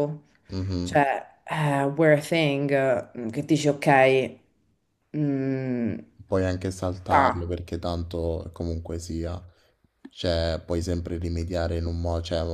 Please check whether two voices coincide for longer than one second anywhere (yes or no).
no